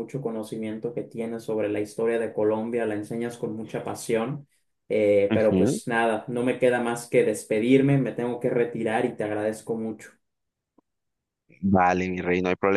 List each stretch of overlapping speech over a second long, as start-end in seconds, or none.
none